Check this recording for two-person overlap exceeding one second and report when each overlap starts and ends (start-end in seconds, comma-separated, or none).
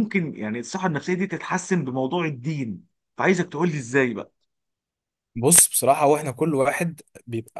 none